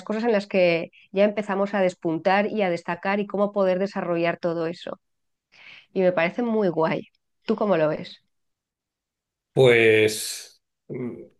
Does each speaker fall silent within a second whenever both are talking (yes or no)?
yes